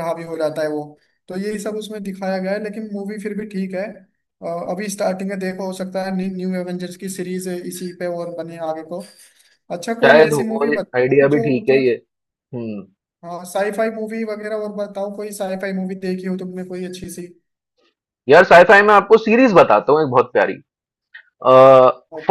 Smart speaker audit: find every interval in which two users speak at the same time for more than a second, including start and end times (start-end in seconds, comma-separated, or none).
10.1-11.9